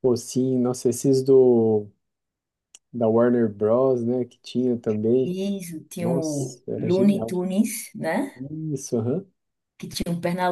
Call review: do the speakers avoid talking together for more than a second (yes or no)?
no